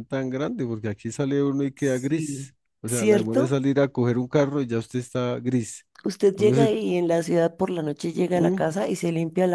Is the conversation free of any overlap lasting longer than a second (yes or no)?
no